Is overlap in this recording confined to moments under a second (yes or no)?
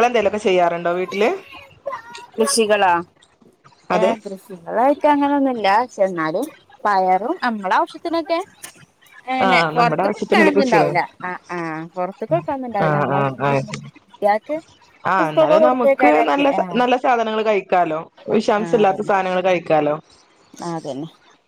no